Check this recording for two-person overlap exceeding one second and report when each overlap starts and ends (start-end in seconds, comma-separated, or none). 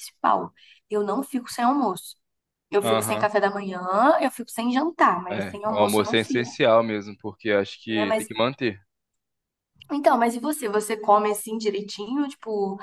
5.3-6.6